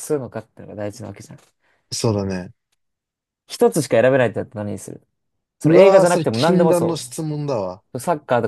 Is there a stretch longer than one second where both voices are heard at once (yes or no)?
yes